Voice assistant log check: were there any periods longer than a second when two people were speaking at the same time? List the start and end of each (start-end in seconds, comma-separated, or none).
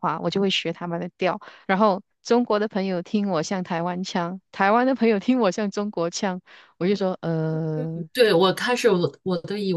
none